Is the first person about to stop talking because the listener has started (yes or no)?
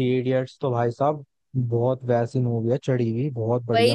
yes